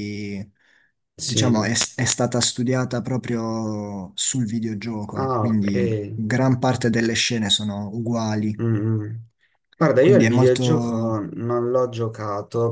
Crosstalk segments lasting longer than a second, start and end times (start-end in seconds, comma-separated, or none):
10.0-11.2